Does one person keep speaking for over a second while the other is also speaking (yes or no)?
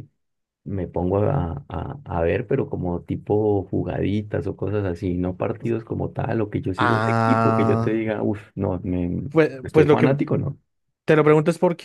yes